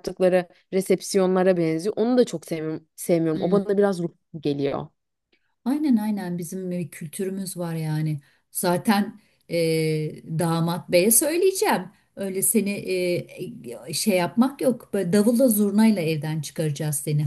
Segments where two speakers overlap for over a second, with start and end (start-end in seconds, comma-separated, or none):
none